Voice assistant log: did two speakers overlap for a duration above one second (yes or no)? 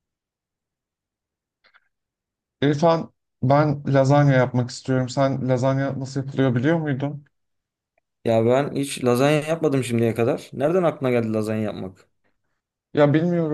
no